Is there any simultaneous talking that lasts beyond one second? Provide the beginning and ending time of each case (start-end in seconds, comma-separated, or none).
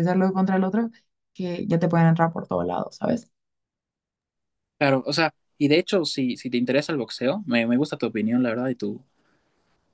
none